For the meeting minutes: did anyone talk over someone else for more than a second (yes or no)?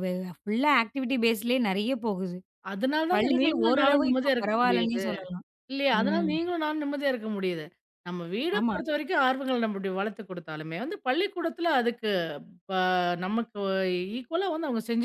yes